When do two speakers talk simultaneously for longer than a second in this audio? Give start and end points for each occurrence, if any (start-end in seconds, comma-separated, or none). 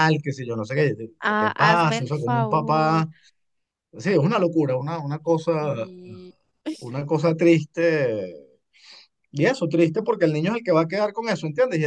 1.2-3.1